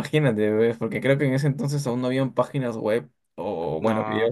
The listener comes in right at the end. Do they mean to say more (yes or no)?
no